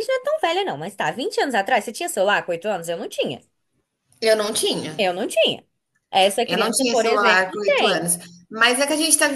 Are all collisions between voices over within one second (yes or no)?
no